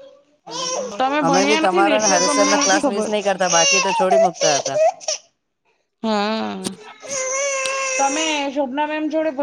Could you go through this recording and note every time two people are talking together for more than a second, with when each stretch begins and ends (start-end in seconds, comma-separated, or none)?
1.2-3.1